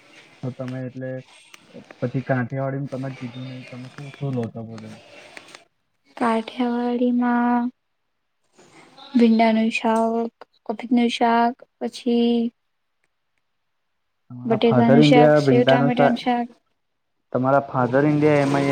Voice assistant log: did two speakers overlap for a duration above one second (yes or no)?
yes